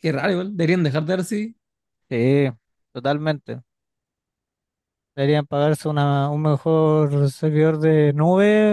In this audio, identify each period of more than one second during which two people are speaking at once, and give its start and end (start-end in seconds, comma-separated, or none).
none